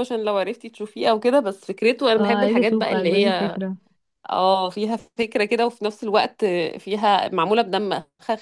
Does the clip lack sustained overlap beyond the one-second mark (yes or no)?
no